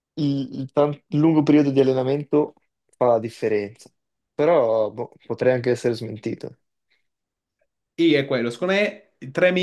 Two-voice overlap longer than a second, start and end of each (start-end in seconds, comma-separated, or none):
none